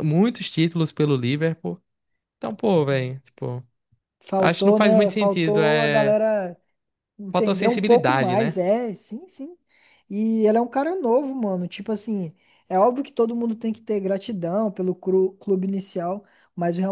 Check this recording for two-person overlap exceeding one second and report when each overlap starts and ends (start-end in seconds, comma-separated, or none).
4.4-6.2, 7.3-8.6